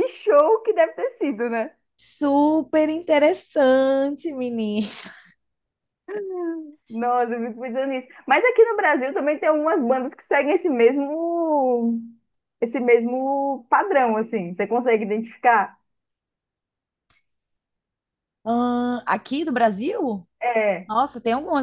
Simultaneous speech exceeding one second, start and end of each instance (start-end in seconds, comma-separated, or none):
none